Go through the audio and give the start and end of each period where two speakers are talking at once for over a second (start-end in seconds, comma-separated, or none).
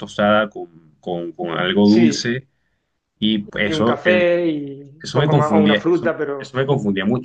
5.0-6.6